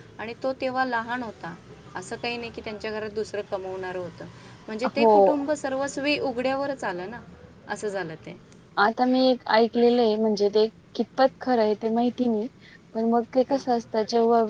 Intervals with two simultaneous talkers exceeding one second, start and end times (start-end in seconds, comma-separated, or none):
none